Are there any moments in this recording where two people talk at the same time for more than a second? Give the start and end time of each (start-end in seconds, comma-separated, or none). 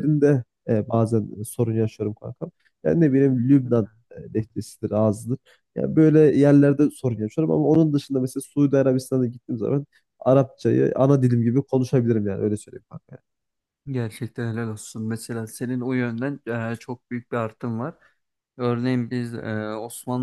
none